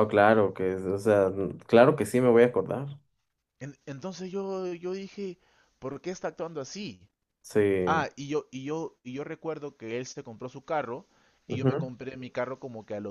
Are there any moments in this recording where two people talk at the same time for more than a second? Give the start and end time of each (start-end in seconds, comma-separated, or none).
none